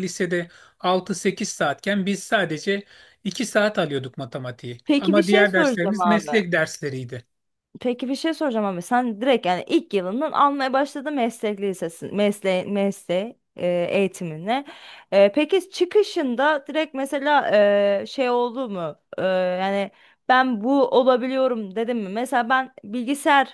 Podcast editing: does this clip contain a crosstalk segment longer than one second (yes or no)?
yes